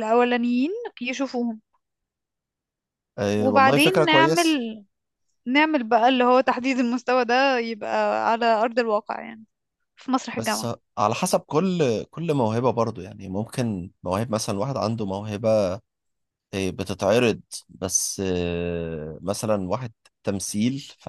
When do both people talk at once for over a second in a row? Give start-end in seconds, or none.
3.4-4.6